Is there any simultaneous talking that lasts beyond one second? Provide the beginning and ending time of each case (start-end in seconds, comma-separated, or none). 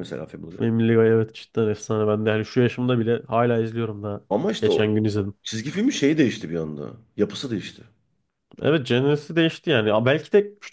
none